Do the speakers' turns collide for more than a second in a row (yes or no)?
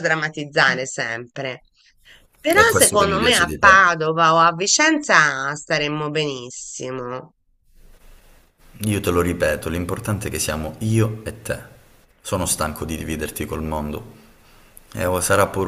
yes